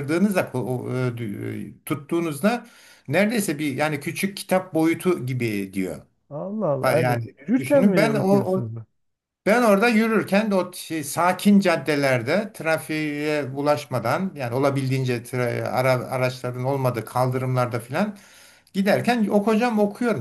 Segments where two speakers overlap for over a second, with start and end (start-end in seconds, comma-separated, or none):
6.8-8.7